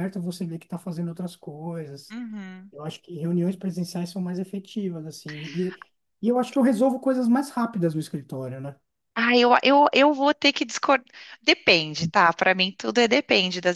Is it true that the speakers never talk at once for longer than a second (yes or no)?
yes